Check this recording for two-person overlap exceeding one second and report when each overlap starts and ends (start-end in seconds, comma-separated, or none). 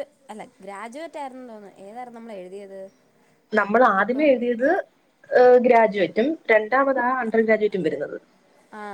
none